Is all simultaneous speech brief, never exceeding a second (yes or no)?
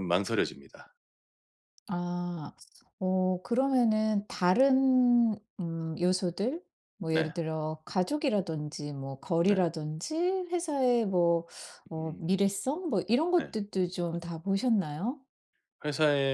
yes